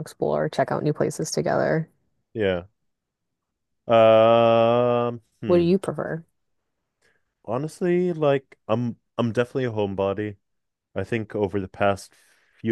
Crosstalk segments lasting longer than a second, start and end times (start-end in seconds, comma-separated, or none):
none